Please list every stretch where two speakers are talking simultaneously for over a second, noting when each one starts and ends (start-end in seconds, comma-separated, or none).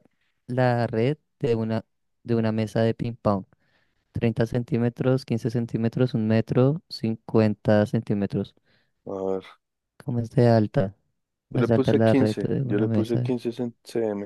11.5-13.3